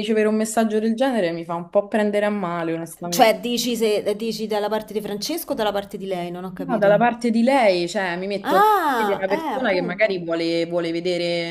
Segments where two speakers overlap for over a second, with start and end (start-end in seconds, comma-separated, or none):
8.4-10.2